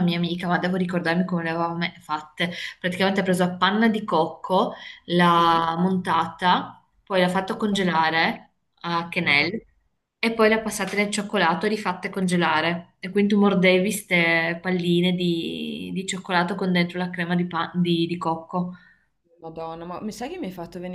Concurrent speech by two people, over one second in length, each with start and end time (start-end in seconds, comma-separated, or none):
none